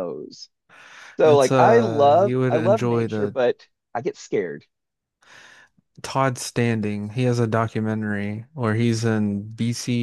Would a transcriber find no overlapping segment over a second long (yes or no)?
no